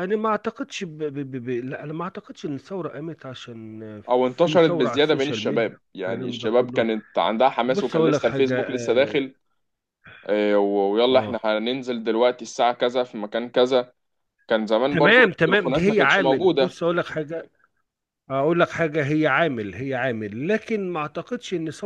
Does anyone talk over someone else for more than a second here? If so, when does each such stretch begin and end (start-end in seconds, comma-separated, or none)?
4.2-6.9, 7.7-9.2, 14.9-16.8